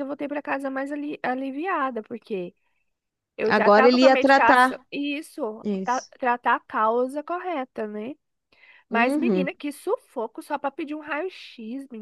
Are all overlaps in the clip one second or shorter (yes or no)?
no